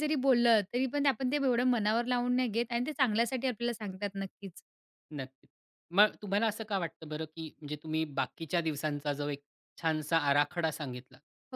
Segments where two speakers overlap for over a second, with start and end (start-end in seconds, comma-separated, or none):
none